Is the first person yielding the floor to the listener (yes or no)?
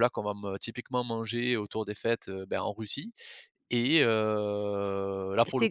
yes